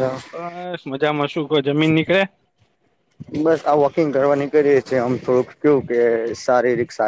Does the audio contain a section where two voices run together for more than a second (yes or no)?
no